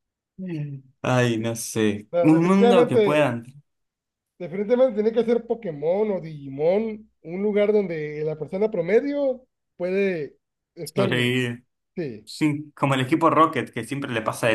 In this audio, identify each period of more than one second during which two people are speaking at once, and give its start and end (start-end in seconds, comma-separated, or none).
2.1-3.3